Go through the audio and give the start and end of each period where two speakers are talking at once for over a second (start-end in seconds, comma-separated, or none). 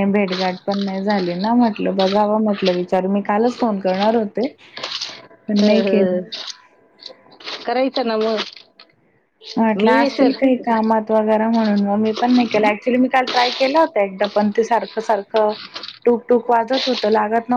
none